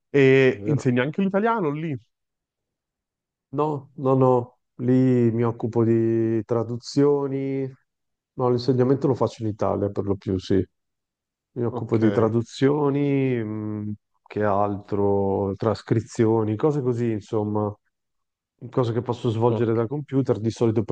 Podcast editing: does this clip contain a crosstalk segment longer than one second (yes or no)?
no